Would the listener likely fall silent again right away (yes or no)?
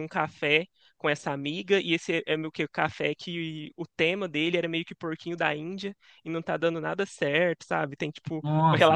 yes